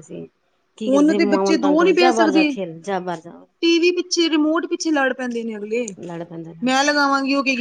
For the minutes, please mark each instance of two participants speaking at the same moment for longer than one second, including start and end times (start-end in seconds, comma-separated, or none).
0.9-2.5